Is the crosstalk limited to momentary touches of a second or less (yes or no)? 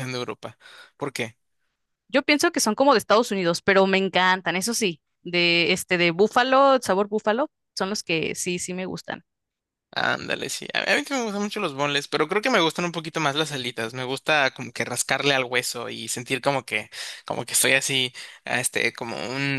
yes